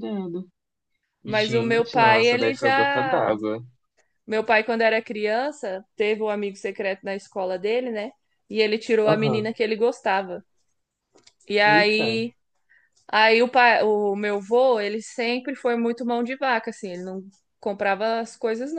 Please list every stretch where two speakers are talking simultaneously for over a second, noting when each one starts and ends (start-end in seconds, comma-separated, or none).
1.2-3.3